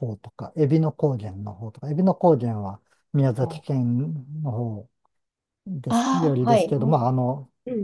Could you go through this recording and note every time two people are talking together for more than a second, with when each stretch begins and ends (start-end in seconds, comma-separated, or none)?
5.9-7.1